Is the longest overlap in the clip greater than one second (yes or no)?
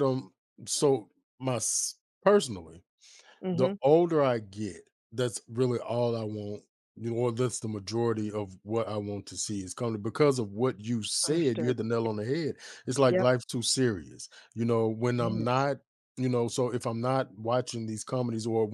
no